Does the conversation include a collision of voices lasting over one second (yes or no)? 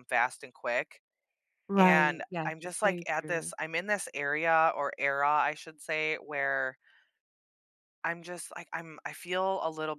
yes